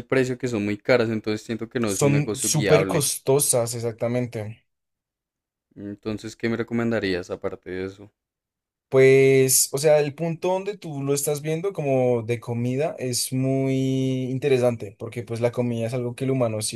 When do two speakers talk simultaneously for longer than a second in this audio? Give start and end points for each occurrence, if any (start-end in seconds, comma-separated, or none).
1.8-3.1